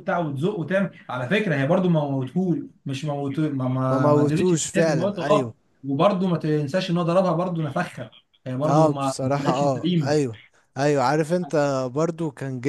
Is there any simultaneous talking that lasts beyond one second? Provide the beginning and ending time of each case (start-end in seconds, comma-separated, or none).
3.9-5.5, 8.7-10.2